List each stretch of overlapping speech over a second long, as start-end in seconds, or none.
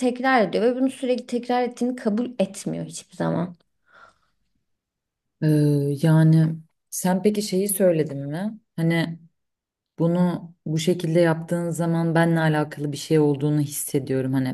none